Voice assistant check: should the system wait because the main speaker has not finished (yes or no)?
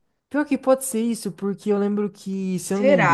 yes